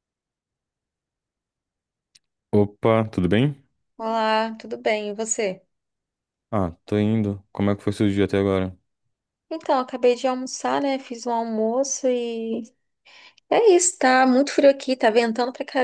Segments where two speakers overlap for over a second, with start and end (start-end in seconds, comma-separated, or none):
none